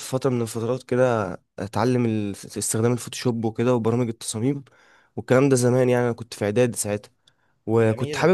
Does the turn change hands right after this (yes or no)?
no